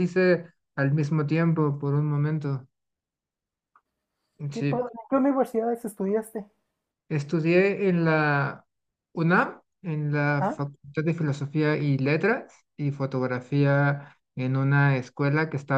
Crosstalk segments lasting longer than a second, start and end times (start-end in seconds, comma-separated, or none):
none